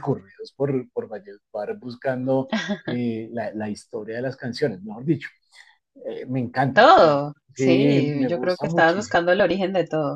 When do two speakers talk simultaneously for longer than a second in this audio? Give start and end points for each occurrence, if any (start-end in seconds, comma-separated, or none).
7.5-9.4